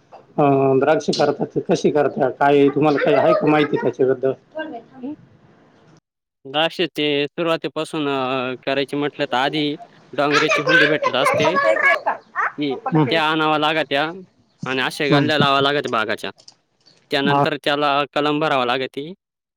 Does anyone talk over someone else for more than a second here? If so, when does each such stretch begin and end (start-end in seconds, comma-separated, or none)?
11.2-13.4